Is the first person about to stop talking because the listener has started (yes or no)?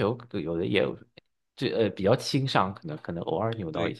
yes